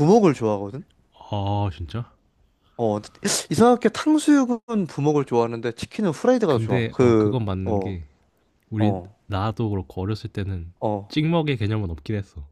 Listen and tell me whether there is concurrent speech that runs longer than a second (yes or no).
yes